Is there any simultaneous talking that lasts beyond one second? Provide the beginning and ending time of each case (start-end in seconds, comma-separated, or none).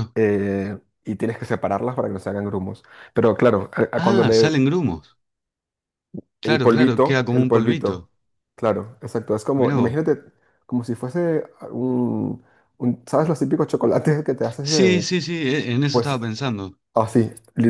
6.4-8.1